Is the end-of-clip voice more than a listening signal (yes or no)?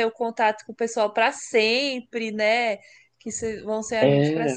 no